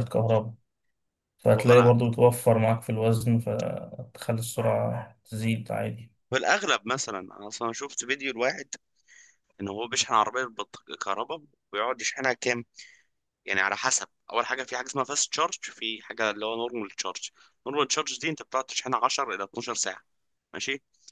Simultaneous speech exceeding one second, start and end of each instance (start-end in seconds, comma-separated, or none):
none